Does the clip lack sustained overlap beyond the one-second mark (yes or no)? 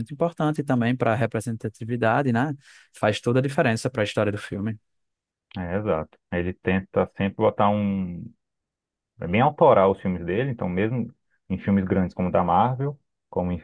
yes